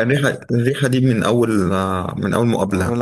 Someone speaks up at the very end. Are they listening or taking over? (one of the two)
taking over